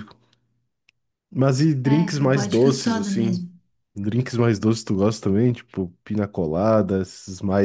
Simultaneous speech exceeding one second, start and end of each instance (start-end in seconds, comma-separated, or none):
1.8-3.4